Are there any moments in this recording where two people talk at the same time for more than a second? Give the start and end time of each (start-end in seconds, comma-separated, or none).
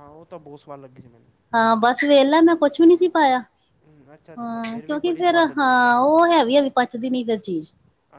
4.4-6.0